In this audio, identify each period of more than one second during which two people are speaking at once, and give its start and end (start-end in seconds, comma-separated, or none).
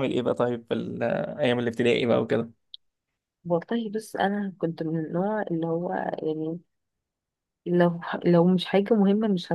none